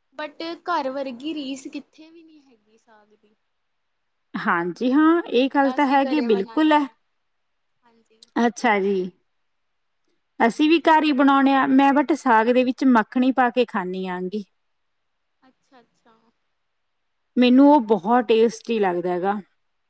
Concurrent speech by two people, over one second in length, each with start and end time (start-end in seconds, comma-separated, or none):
5.4-6.8